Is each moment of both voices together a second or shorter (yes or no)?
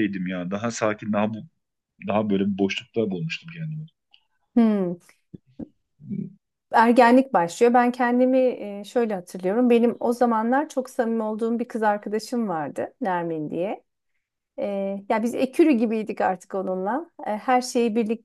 yes